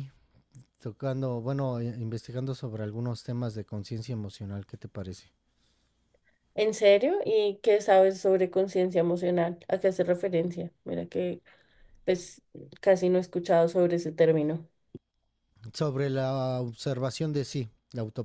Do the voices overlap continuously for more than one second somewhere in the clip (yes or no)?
no